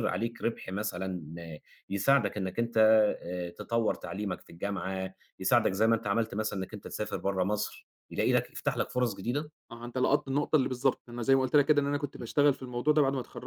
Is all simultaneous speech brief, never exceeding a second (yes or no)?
yes